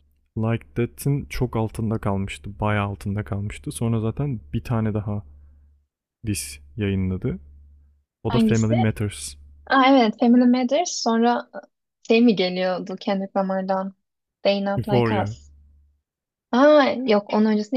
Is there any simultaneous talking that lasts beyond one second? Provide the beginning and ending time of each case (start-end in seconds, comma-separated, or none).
none